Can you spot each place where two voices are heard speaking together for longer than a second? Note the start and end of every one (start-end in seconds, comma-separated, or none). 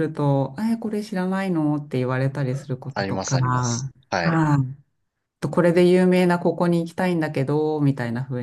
2.9-4.4